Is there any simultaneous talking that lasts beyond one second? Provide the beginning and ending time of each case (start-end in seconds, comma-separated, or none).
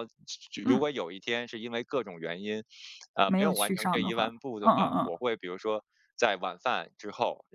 3.2-5.1